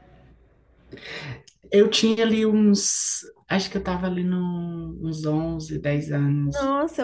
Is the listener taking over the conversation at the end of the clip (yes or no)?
yes